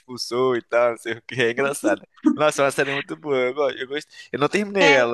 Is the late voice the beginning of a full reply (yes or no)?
no